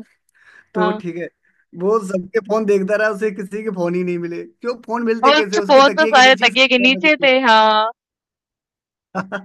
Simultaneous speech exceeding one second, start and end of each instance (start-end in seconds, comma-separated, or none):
5.3-7.3